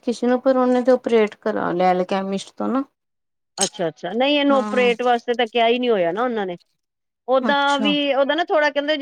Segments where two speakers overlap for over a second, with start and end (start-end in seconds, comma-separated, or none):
none